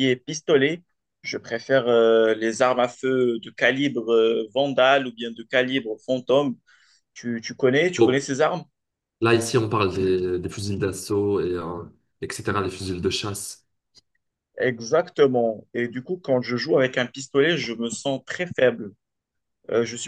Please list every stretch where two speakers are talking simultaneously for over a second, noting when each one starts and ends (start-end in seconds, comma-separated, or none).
none